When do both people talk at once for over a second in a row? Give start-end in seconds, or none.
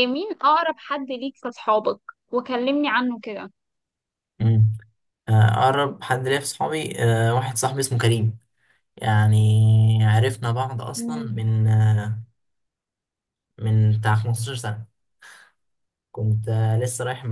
none